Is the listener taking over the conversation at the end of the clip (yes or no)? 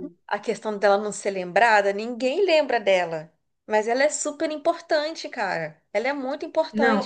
yes